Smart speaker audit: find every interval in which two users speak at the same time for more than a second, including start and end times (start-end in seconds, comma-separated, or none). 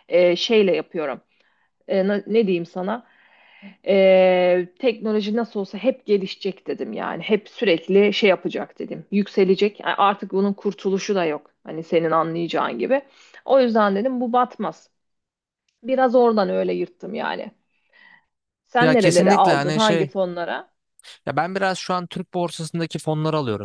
18.8-20.1